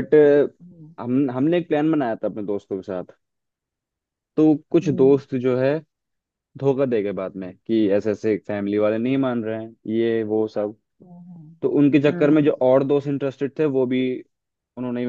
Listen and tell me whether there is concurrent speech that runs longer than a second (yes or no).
no